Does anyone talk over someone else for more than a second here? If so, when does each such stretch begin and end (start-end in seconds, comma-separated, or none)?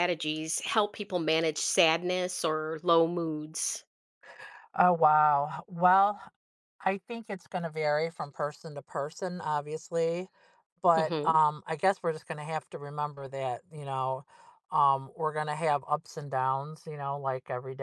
none